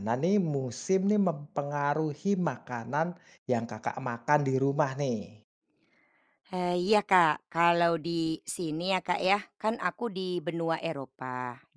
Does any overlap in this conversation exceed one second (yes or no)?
no